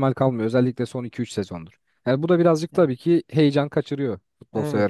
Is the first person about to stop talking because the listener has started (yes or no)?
yes